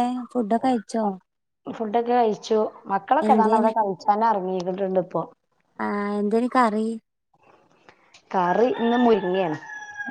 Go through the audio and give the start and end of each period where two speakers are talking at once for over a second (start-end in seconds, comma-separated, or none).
none